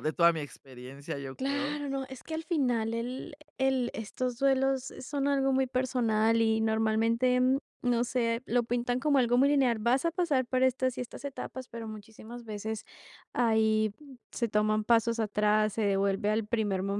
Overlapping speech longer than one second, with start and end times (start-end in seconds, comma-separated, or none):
none